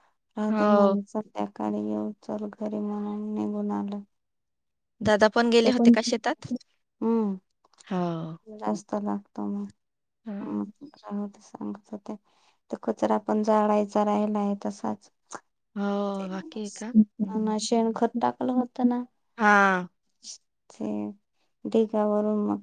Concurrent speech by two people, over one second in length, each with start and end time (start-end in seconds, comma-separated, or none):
16.2-17.5